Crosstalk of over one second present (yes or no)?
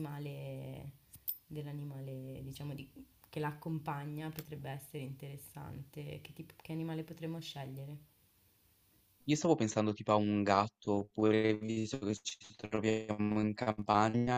no